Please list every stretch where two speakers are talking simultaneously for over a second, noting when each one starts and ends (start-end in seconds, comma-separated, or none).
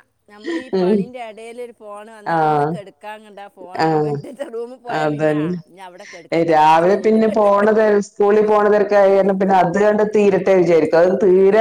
5.0-7.2